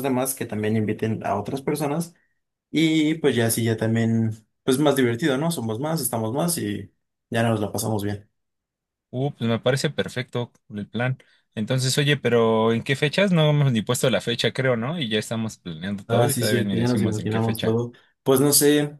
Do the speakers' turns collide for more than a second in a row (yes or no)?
yes